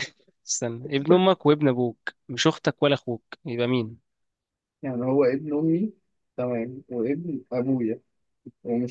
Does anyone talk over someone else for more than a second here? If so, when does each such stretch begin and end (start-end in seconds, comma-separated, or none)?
none